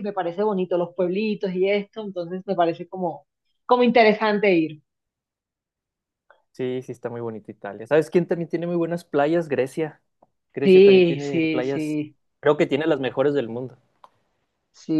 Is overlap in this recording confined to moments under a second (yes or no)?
no